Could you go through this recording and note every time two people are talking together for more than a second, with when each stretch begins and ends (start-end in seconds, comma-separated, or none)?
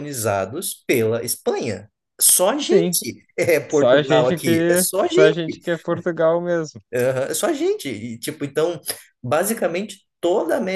3.7-5.3